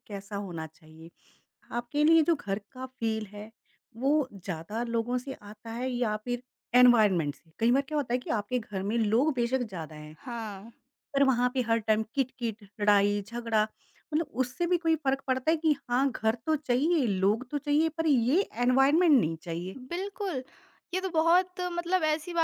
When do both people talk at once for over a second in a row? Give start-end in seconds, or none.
none